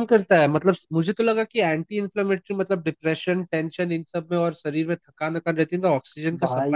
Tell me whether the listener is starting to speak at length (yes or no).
no